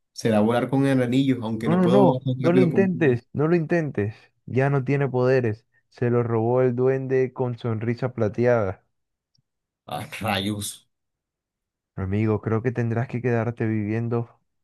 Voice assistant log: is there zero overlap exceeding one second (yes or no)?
no